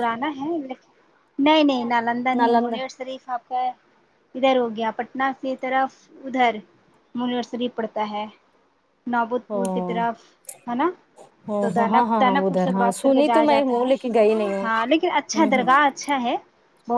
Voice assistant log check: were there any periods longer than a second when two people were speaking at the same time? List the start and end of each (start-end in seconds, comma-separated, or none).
11.6-13.9